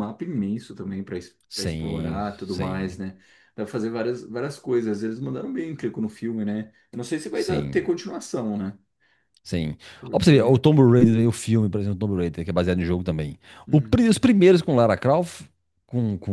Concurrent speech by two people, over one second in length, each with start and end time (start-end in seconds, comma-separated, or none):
1.5-3.0